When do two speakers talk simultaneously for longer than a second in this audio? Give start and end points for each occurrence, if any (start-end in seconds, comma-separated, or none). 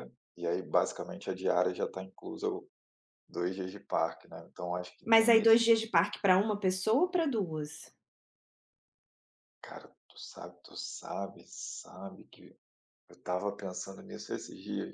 none